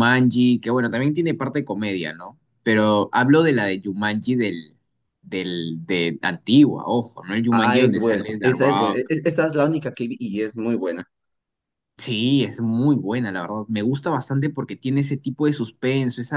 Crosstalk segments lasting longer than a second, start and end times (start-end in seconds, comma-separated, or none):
7.5-9.1